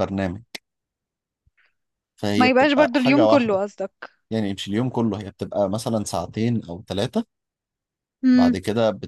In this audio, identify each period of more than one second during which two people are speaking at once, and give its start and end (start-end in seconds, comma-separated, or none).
2.4-3.6